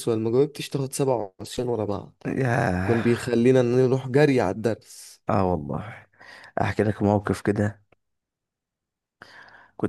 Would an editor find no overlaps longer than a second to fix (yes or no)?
yes